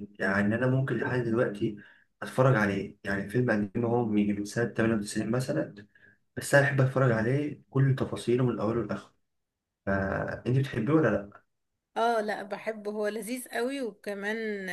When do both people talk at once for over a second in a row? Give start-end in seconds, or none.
none